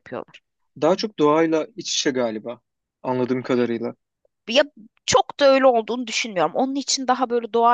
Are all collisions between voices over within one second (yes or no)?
yes